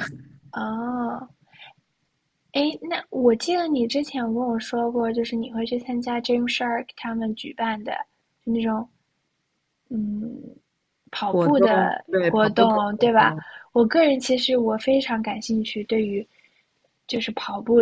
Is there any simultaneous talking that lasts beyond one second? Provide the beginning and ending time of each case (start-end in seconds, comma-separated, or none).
11.3-13.3